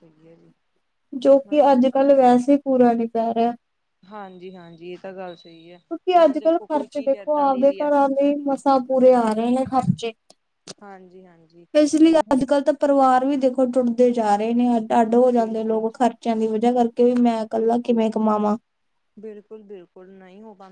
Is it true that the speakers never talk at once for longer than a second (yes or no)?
no